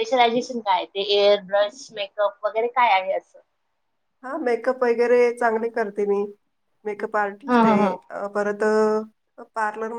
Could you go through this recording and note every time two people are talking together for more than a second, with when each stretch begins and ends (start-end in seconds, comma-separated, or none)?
none